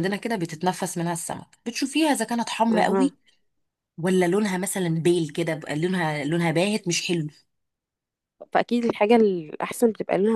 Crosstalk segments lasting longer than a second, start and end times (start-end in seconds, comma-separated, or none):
none